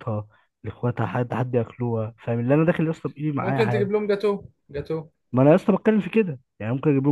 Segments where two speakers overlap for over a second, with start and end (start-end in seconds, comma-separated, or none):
none